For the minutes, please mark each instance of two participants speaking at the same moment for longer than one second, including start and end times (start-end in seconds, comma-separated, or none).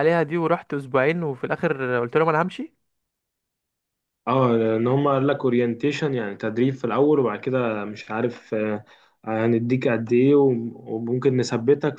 none